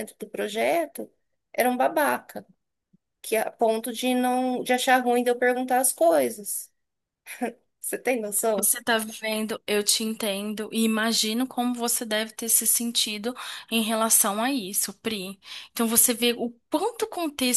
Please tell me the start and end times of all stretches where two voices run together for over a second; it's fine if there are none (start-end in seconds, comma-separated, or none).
none